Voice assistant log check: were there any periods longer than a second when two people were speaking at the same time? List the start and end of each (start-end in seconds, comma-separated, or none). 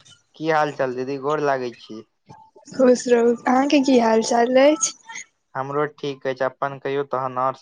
none